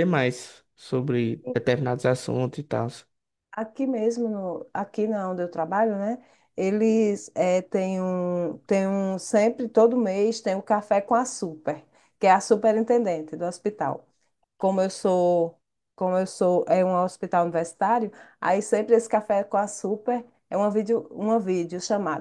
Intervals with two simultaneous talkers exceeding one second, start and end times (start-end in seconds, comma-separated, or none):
none